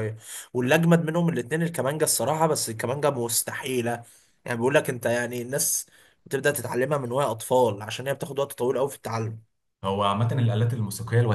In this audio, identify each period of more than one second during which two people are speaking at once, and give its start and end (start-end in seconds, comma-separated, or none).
none